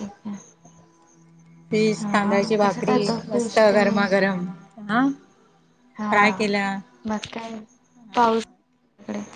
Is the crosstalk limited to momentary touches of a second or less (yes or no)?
no